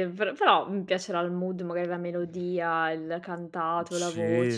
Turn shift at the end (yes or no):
yes